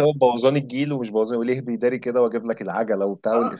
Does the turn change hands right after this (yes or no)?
yes